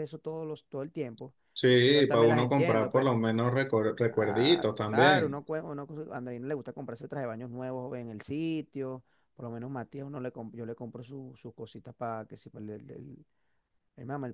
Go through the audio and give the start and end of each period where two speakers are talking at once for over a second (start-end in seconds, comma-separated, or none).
1.5-3.1, 4.1-5.4